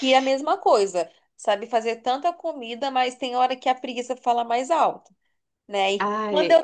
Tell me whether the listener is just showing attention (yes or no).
yes